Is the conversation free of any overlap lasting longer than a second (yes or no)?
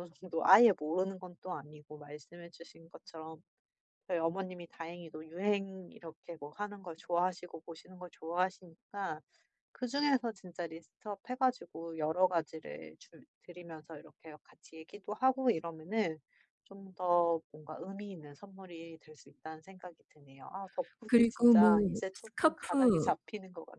no